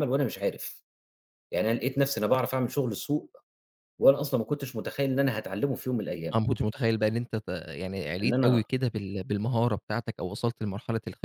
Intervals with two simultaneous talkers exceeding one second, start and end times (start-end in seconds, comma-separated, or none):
none